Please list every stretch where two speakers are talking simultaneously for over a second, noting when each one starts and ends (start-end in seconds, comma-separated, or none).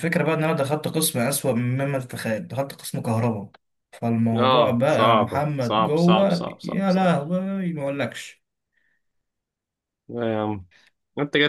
4.3-7.2